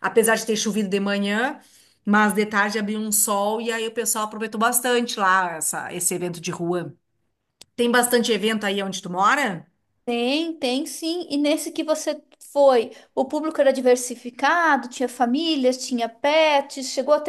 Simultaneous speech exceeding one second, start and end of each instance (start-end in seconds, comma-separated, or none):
none